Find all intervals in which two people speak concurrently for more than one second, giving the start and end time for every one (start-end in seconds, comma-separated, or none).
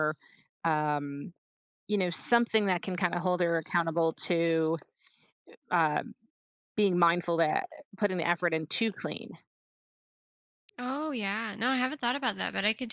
none